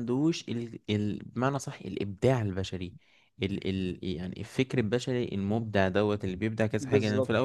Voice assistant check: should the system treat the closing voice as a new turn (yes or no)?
no